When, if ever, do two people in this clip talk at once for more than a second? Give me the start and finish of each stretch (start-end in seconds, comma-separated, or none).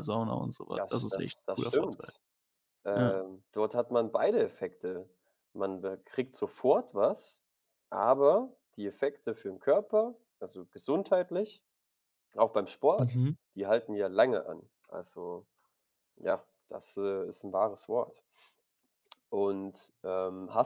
0.8-2.1